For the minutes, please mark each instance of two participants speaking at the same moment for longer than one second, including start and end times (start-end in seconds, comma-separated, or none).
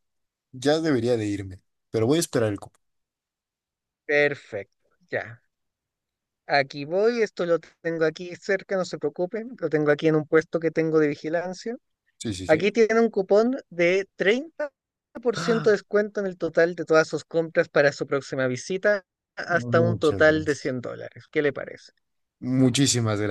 19.5-20.8